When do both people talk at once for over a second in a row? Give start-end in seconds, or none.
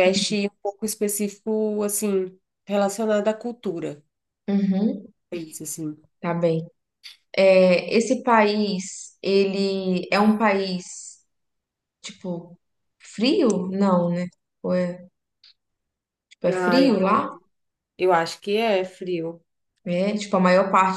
none